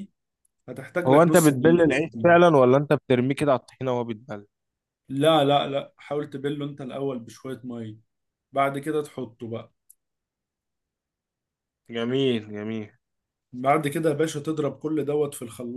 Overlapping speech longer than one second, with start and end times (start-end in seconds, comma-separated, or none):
1.1-2.3